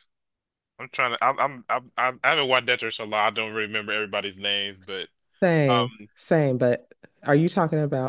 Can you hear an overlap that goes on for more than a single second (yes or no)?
no